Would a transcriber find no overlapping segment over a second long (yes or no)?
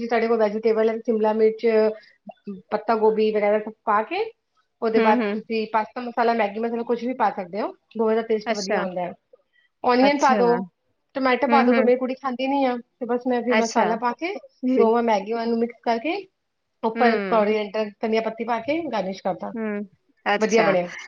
yes